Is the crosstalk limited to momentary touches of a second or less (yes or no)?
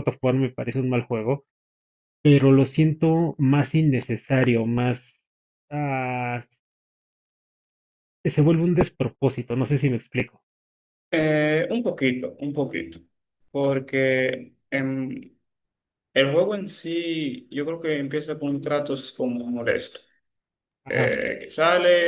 yes